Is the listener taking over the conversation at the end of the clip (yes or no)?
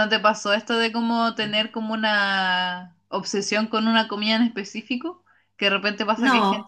no